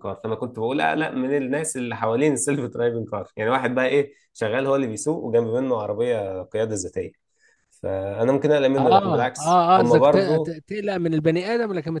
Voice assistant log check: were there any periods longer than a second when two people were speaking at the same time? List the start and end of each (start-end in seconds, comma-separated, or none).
8.8-10.6